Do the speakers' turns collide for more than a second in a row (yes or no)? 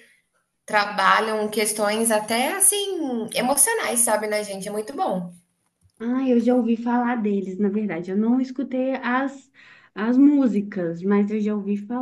no